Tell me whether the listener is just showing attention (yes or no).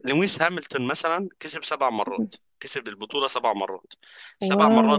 yes